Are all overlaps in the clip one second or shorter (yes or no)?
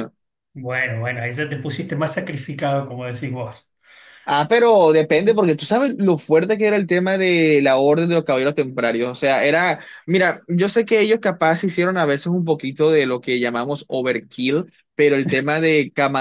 yes